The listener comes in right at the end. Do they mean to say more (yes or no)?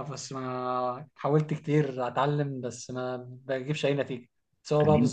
no